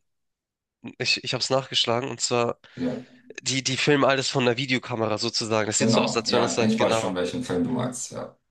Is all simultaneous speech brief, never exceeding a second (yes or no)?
no